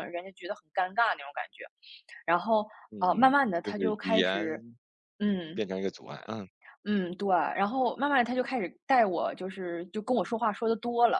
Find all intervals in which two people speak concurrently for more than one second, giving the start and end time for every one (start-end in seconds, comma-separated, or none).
2.9-4.6